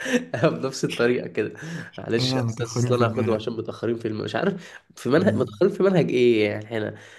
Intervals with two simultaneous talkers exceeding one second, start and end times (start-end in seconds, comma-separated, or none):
2.2-3.4